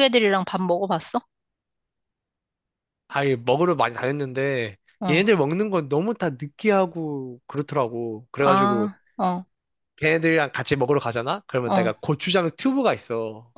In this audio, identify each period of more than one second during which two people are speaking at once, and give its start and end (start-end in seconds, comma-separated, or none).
none